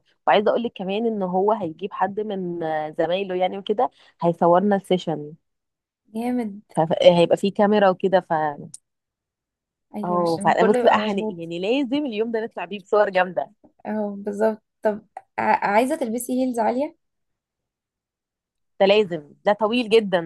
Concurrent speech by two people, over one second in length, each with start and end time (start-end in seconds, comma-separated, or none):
10.0-11.4